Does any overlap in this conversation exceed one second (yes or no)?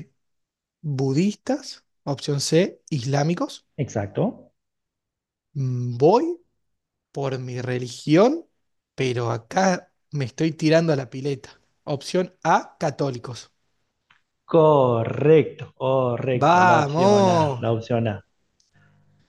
yes